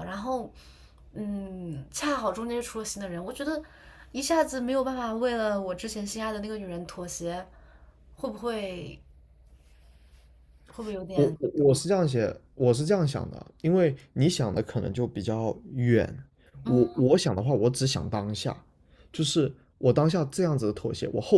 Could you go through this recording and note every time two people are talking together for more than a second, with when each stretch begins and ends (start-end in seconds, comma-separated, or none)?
none